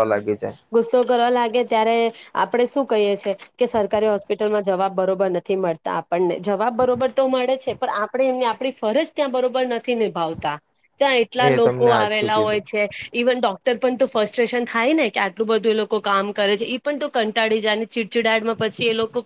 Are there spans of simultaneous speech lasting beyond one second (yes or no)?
yes